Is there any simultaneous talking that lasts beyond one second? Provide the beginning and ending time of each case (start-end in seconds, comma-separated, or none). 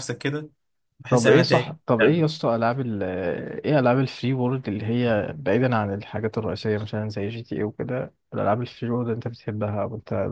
1.1-2.4